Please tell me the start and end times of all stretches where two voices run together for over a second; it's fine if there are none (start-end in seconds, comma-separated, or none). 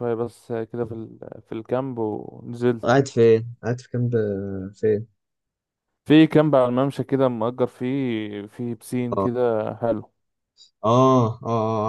none